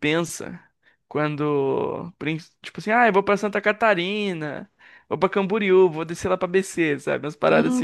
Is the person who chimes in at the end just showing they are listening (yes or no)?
no